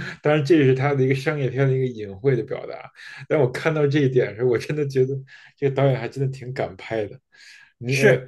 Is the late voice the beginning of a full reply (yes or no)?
yes